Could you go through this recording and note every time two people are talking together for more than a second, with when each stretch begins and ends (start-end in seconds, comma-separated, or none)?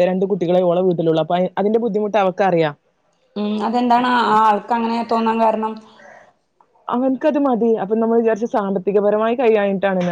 none